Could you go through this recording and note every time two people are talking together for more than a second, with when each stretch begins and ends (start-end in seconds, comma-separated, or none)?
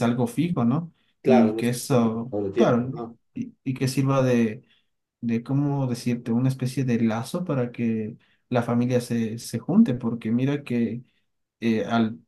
1.2-2.9